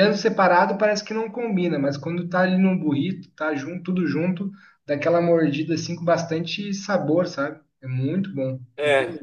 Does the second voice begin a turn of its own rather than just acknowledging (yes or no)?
yes